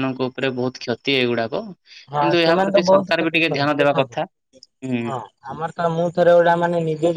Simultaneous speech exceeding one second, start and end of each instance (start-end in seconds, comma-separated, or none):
2.2-4.2